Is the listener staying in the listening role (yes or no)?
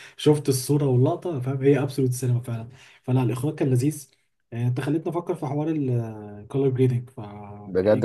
no